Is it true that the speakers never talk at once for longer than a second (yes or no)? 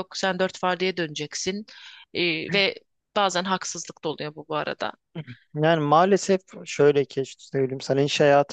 yes